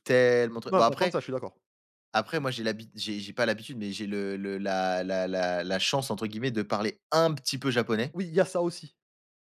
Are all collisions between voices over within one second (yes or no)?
yes